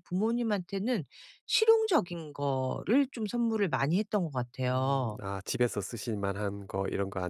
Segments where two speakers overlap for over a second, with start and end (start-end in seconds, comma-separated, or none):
none